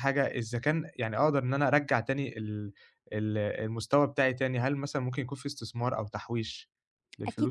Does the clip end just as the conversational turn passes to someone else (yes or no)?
yes